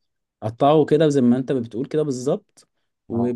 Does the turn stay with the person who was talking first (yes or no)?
yes